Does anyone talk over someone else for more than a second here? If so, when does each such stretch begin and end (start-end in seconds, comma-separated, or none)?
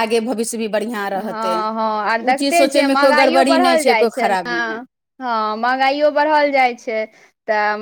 2.3-4.8